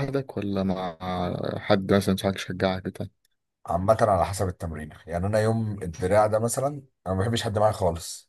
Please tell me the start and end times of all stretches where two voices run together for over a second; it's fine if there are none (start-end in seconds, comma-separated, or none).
none